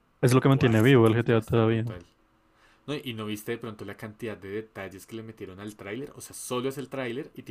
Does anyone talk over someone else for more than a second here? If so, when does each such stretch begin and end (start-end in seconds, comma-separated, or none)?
0.5-1.8